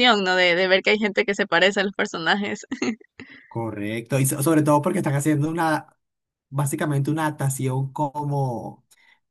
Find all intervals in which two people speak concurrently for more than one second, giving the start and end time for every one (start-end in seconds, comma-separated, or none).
none